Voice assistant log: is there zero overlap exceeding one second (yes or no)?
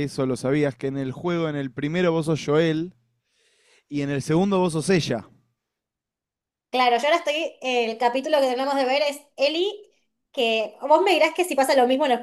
yes